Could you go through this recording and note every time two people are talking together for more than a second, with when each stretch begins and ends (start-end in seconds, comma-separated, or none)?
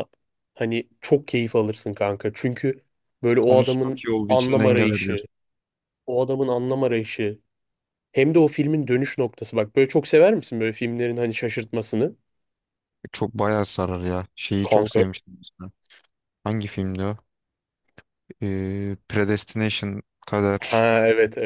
3.4-5.2